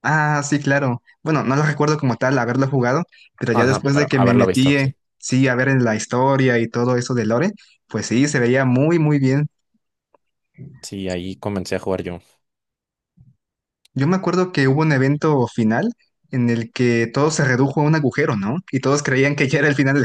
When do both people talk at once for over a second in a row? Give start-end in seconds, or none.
3.5-5.0